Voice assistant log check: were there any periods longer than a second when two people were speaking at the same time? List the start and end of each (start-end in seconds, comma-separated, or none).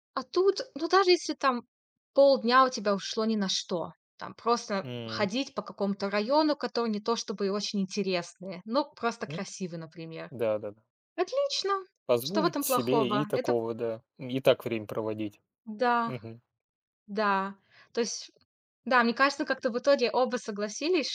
12.2-13.6